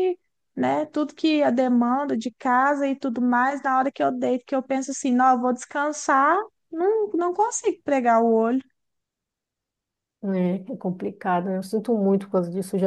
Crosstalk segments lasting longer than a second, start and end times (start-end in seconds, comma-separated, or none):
none